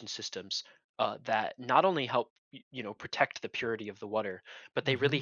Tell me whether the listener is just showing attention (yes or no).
yes